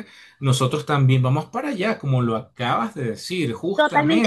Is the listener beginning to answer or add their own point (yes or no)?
yes